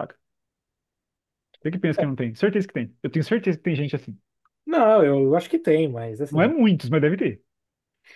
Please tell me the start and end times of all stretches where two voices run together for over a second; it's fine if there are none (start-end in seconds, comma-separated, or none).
none